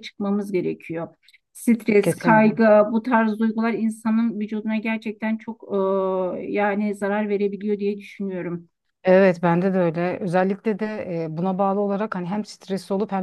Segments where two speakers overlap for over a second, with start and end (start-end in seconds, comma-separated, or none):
none